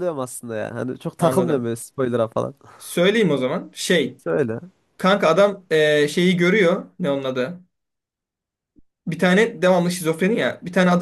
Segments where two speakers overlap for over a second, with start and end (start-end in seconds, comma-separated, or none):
none